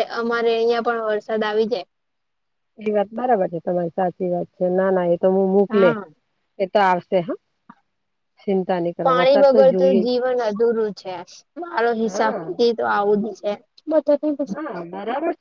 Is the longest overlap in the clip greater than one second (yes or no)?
no